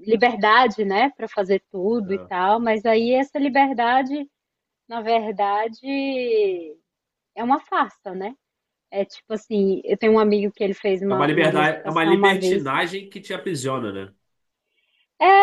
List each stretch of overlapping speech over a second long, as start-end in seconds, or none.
11.1-12.6